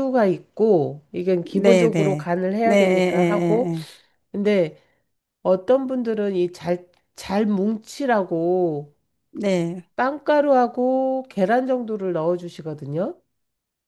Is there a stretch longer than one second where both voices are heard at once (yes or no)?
yes